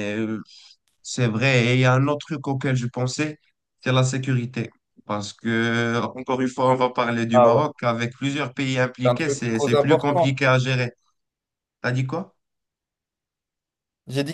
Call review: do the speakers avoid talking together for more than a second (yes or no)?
no